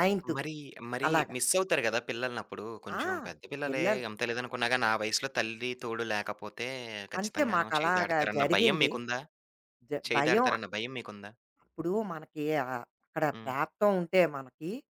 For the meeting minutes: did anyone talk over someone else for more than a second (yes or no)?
yes